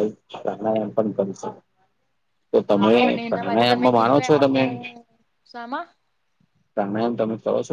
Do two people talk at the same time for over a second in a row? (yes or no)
yes